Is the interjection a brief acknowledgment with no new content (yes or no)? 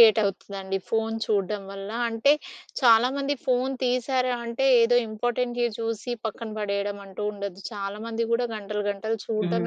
yes